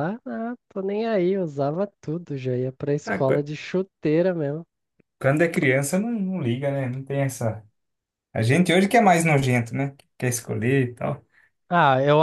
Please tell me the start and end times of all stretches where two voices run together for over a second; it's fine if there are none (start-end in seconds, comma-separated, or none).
none